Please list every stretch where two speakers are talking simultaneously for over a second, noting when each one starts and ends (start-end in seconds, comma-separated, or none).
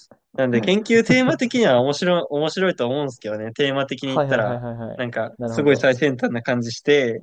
4.0-5.9